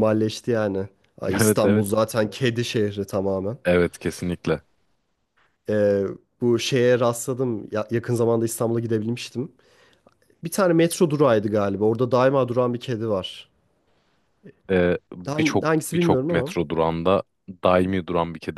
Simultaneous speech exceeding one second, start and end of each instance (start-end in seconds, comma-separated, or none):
15.3-16.6